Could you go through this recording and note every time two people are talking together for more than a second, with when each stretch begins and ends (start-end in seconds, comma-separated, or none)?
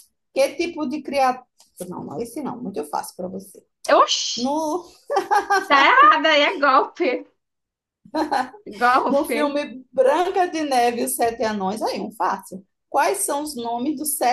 none